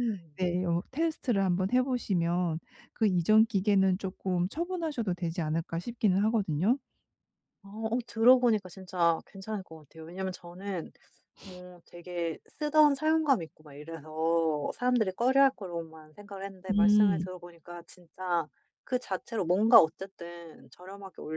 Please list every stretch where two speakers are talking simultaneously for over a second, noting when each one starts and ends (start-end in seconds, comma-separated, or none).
none